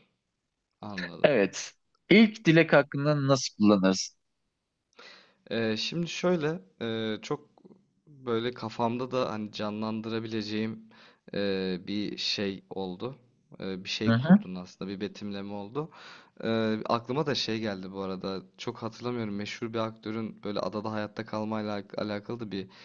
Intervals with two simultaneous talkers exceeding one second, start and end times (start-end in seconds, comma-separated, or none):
none